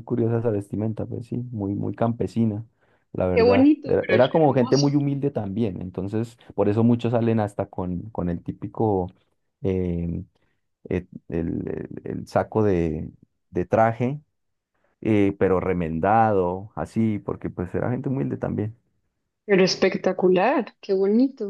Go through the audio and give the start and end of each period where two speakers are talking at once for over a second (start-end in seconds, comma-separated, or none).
3.3-5.0